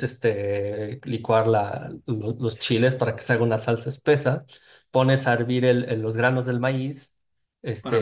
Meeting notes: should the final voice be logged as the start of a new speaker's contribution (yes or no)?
yes